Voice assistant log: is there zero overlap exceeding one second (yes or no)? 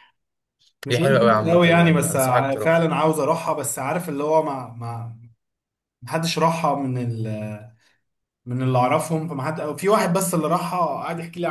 no